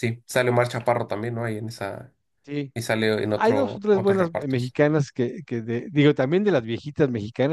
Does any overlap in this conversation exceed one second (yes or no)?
yes